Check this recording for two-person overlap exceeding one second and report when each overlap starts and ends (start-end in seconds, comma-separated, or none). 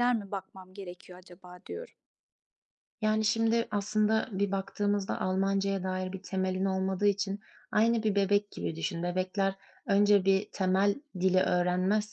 none